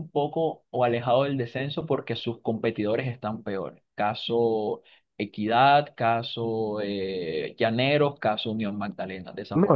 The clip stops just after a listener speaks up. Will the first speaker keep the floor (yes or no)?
no